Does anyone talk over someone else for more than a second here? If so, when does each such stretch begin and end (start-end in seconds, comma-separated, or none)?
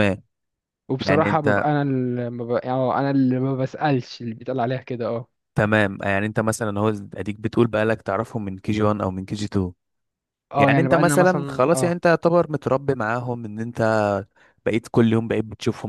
10.6-11.9